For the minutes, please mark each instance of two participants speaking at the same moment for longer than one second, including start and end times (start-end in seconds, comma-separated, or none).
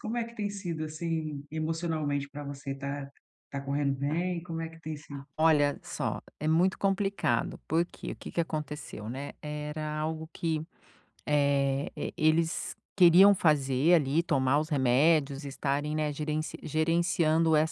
none